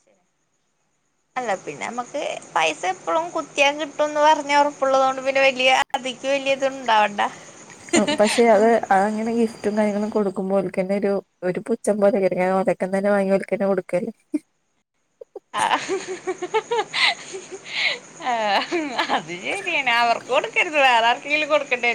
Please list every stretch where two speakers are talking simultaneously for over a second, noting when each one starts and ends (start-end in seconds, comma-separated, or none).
none